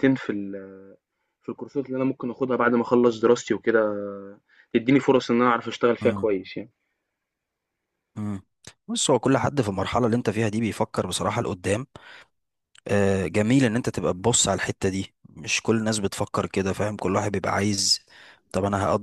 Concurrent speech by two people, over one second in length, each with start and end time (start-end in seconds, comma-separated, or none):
none